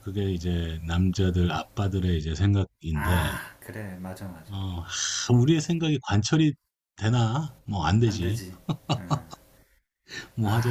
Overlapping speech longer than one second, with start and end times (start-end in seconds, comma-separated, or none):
none